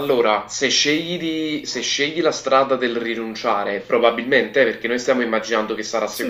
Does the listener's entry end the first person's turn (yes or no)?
no